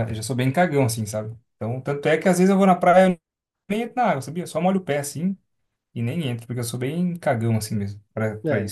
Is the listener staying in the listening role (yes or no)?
no